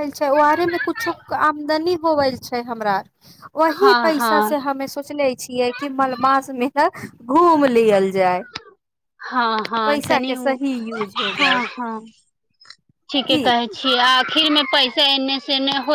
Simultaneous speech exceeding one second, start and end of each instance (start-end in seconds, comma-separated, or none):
9.8-11.6